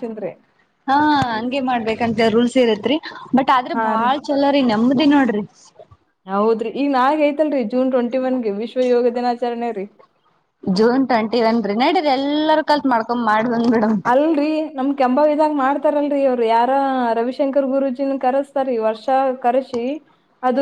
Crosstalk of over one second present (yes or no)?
no